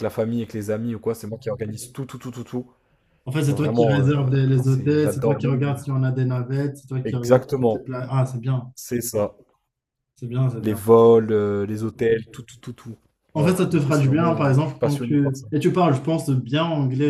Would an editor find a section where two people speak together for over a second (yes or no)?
yes